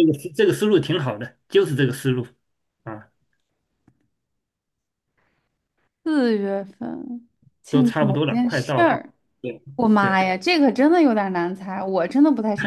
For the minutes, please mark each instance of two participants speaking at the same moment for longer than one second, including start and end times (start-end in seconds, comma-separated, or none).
7.7-8.9